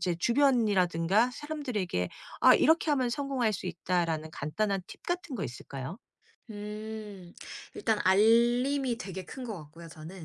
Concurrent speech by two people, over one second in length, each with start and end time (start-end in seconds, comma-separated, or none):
none